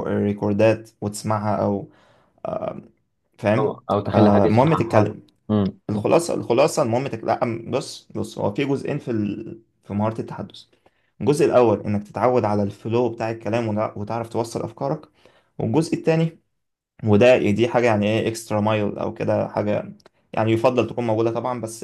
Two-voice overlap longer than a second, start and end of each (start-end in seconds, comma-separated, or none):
3.6-5.3